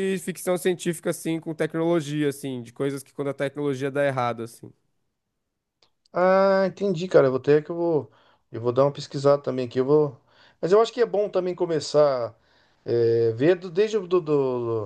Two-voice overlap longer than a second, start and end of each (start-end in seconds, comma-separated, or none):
none